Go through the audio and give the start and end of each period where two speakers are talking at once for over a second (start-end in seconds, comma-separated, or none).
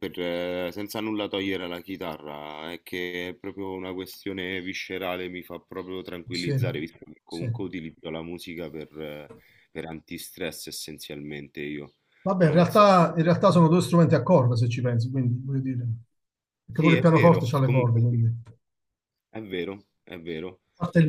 16.8-18.2